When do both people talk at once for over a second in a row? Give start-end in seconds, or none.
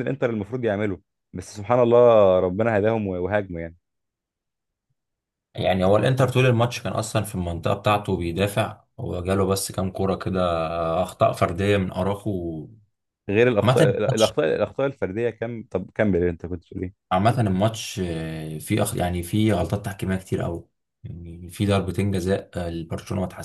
none